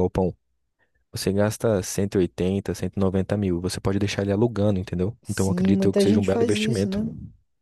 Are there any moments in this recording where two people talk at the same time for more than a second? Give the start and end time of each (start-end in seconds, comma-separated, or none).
5.2-7.0